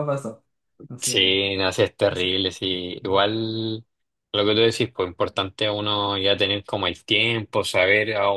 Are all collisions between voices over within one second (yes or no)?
yes